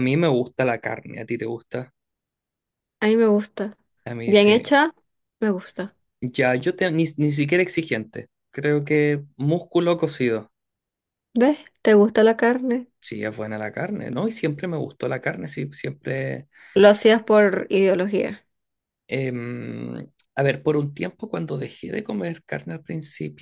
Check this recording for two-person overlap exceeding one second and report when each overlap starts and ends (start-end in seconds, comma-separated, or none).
none